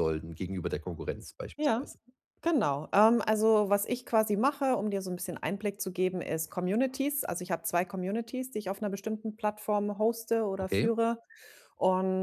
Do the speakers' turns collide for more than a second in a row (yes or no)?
no